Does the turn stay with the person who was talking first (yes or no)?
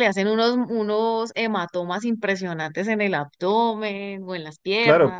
no